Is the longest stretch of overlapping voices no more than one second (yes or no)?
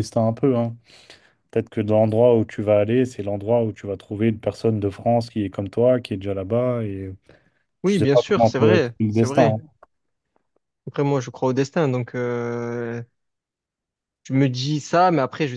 no